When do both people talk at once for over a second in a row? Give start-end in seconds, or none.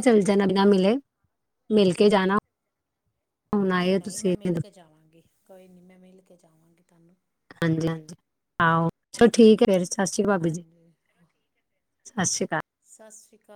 none